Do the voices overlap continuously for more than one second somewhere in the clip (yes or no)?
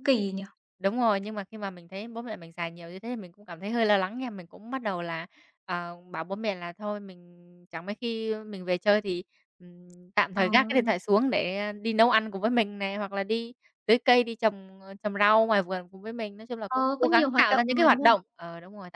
yes